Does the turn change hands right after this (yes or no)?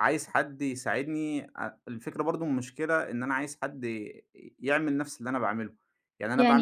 no